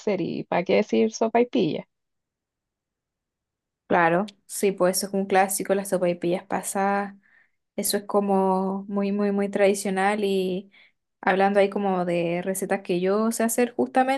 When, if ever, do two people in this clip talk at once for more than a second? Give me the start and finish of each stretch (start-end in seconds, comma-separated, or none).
none